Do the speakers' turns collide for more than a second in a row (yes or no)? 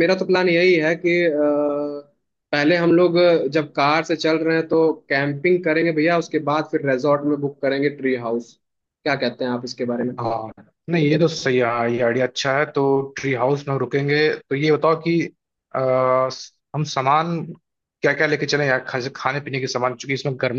no